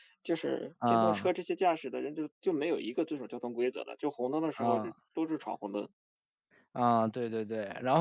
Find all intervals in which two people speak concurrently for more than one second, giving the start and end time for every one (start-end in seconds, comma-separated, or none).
none